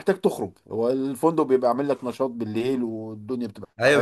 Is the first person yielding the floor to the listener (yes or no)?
yes